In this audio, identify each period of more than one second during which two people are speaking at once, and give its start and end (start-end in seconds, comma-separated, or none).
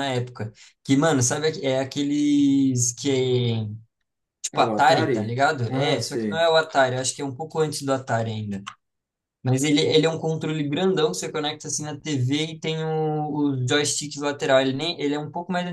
4.5-6.5